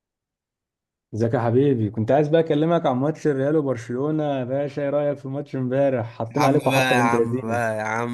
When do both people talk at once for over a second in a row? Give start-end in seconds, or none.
6.3-7.6